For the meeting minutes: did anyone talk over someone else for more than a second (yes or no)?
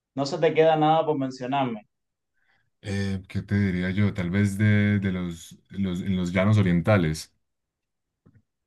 no